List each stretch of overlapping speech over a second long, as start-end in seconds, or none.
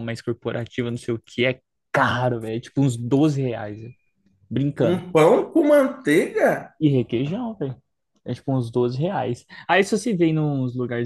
none